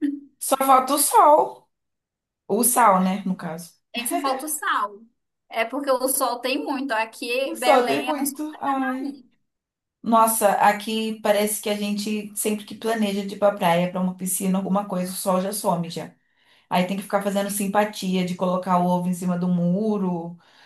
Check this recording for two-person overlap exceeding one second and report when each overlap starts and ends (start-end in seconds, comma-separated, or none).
7.4-9.2